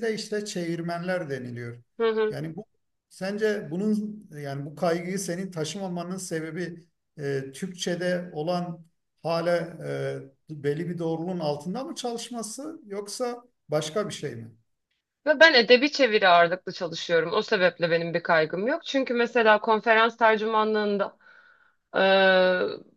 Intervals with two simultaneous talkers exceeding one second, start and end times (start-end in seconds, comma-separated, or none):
none